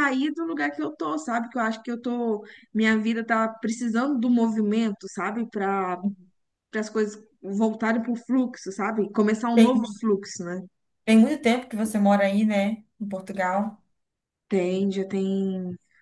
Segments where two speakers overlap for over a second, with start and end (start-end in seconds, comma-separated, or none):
none